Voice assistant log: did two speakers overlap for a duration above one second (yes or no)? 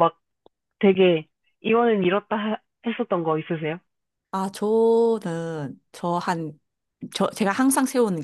no